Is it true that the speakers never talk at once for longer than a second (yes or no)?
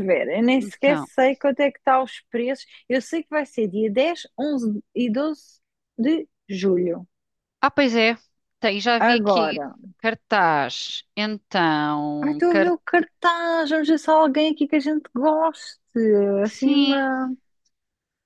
yes